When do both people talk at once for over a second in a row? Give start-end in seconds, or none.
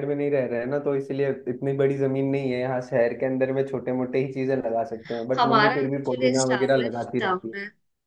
5.4-7.5